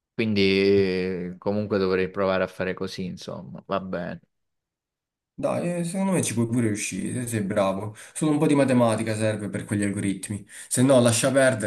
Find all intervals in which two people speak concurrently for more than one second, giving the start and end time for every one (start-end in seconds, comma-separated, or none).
none